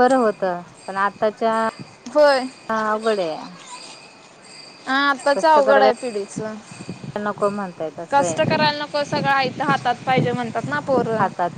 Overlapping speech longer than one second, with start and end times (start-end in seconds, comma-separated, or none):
none